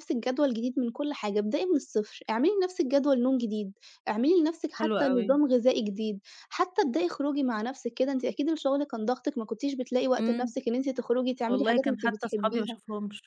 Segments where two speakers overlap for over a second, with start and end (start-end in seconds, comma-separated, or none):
11.5-12.8